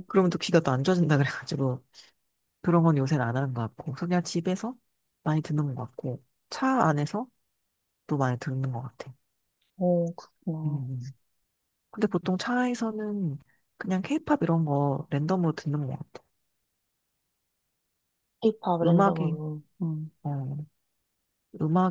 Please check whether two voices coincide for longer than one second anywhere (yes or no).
no